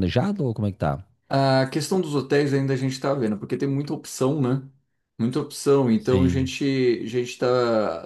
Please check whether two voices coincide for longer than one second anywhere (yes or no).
no